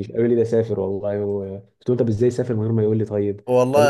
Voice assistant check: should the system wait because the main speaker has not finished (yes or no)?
no